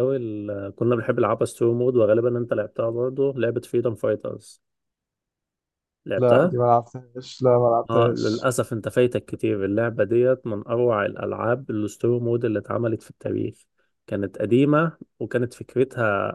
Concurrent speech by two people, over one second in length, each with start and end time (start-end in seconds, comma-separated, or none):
none